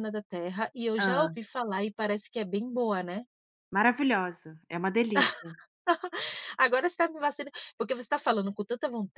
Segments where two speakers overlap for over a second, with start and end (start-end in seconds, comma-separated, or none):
none